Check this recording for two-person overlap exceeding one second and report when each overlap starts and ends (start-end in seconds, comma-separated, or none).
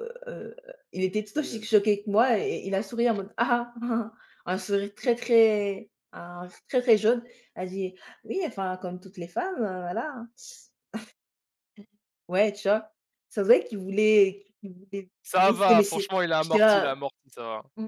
15.2-16.9